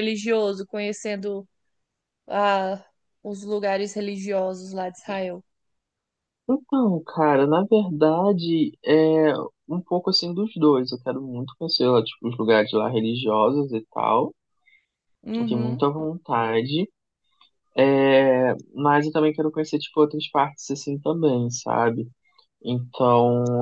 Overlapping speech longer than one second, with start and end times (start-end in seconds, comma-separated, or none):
none